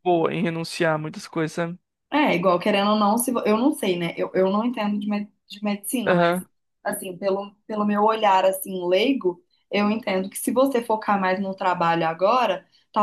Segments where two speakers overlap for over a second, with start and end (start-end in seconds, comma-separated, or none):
none